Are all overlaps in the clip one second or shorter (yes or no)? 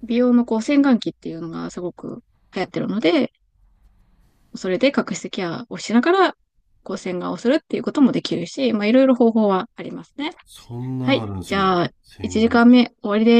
no